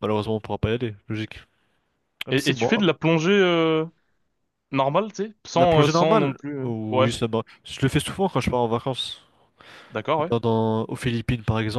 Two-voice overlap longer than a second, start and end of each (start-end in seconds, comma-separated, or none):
5.5-7.1